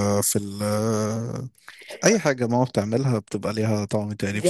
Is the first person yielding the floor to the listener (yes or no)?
no